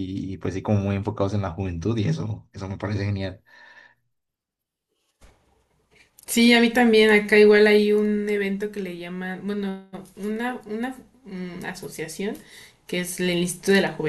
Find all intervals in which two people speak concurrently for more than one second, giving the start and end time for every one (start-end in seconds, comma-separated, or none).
none